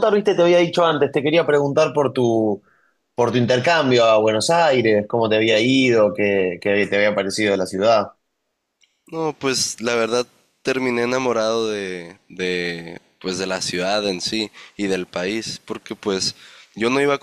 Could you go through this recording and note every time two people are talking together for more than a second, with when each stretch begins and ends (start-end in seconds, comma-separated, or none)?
none